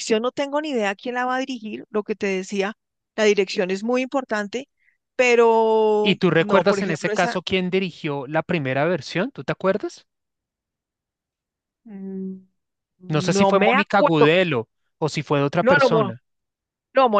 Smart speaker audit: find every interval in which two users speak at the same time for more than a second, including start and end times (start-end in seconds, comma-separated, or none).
6.0-7.4, 13.1-14.3